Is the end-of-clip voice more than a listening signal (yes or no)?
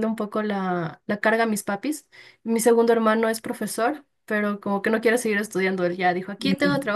no